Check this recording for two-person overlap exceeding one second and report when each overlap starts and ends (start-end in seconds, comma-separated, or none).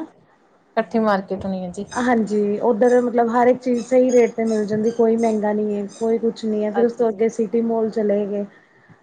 none